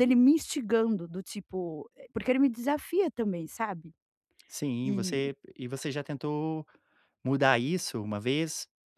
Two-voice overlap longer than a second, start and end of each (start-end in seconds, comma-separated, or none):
none